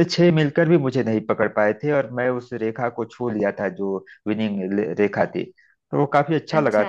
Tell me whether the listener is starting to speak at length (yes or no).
no